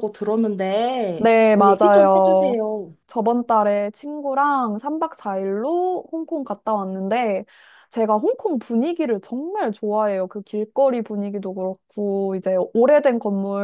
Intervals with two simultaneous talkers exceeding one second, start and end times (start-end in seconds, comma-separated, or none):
1.2-2.6